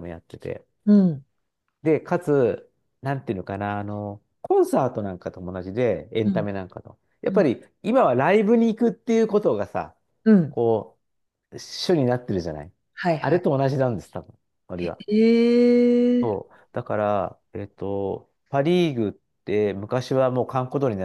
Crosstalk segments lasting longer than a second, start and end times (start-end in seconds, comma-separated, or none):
none